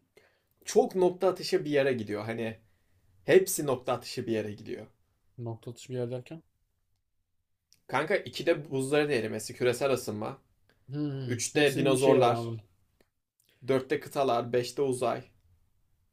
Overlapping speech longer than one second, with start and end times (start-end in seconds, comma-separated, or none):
11.2-12.5